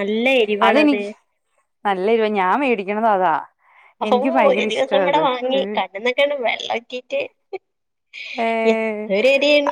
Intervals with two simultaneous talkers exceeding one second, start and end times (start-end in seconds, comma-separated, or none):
none